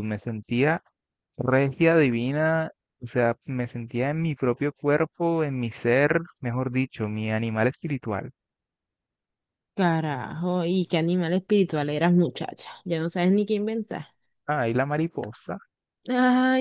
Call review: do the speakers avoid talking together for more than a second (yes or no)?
yes